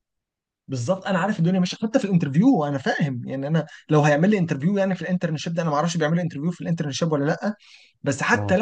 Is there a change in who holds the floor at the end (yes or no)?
no